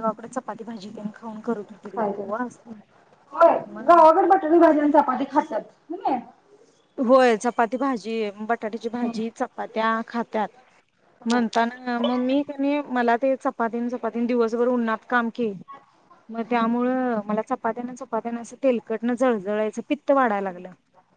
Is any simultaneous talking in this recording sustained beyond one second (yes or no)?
no